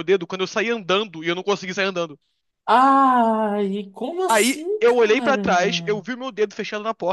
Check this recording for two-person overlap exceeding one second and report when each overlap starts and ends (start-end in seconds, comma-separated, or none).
4.3-6.0